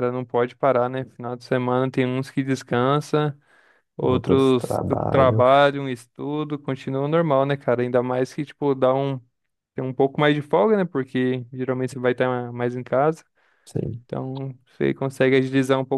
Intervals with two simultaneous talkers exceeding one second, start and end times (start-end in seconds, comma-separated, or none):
4.0-5.4